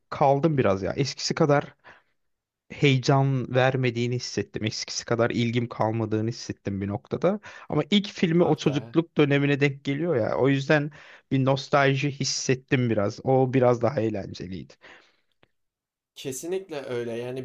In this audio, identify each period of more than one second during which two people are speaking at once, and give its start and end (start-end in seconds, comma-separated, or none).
none